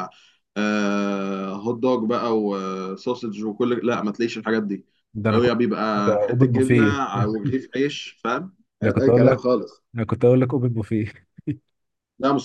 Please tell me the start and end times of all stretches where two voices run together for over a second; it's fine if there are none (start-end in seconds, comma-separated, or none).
5.3-6.9